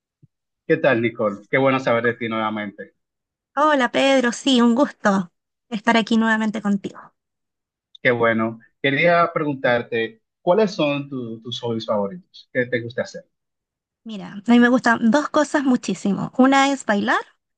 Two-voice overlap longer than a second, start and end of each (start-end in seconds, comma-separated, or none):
none